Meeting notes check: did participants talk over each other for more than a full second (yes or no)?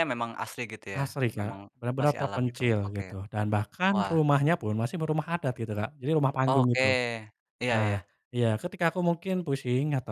yes